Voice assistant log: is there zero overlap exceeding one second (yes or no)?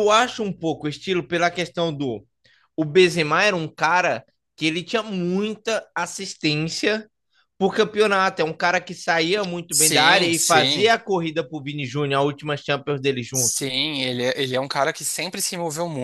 no